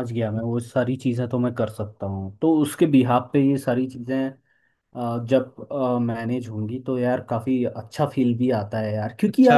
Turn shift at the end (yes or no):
yes